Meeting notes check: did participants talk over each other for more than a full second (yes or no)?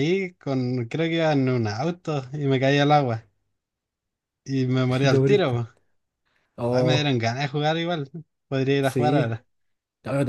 no